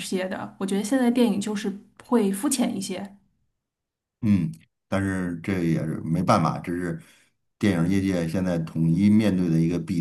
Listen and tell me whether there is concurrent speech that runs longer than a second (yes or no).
no